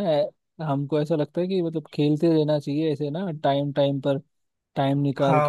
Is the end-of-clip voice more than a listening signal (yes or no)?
no